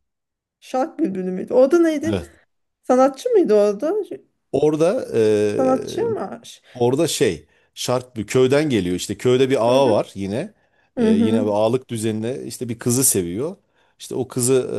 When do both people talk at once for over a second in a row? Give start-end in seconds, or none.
none